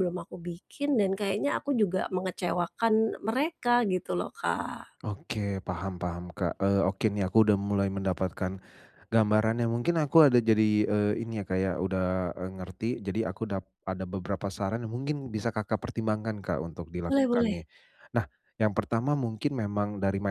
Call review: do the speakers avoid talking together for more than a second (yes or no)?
yes